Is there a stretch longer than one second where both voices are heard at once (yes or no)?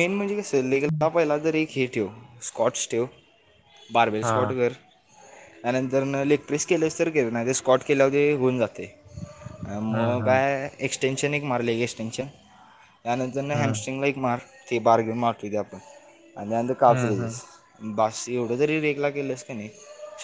no